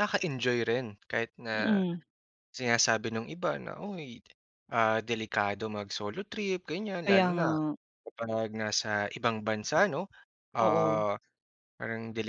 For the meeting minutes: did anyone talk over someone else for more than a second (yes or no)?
no